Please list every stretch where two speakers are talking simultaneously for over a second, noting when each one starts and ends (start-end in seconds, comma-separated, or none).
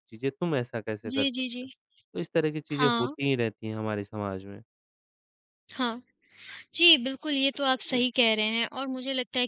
none